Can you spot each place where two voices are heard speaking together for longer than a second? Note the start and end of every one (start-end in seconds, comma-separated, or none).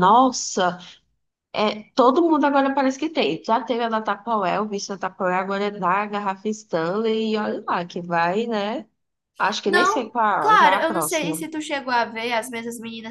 9.7-11.4